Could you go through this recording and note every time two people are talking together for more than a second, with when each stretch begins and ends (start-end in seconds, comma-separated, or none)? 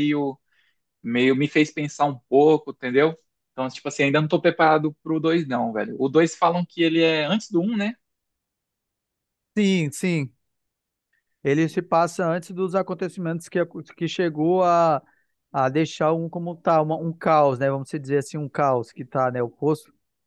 none